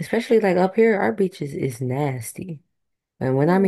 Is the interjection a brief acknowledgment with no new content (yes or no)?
yes